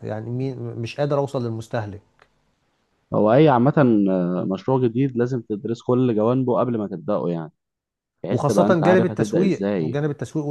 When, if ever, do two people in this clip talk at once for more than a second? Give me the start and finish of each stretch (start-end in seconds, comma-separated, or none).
8.3-10.0